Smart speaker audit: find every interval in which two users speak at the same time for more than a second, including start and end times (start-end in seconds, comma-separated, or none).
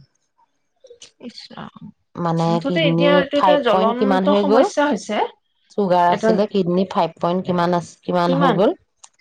2.5-4.6